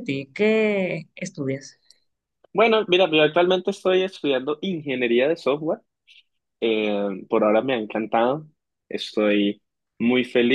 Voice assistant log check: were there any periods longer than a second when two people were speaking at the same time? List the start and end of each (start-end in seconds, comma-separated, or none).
none